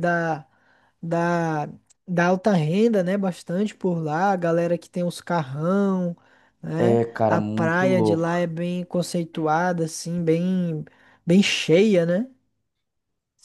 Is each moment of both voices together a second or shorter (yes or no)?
no